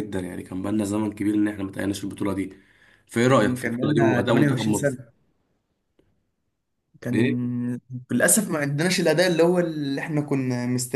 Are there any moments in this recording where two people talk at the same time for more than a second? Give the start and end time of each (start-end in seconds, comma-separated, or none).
3.4-5.0